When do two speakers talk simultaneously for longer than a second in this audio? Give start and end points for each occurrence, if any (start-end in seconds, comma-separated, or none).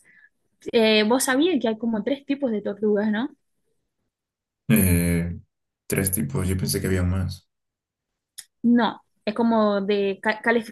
none